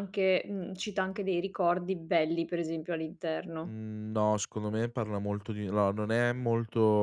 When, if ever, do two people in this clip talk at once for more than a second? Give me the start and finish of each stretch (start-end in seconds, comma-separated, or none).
none